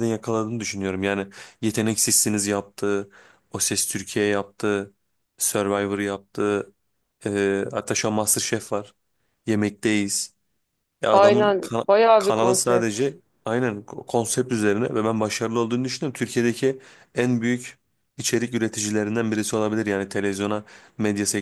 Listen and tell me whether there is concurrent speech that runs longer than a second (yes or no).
yes